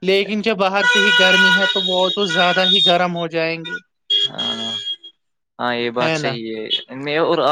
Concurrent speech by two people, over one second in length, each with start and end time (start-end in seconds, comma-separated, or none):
none